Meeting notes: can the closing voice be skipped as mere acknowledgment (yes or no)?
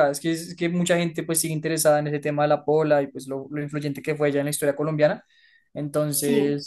yes